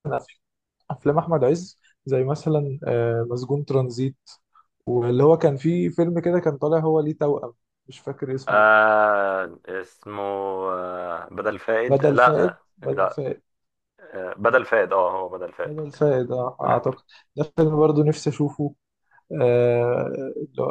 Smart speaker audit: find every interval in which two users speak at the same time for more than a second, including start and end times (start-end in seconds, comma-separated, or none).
11.9-13.2